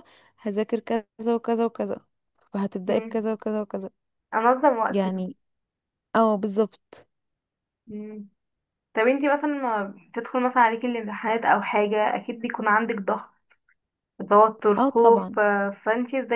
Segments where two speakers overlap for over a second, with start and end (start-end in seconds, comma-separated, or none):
none